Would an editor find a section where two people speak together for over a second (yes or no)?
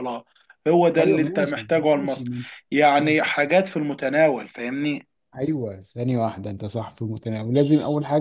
yes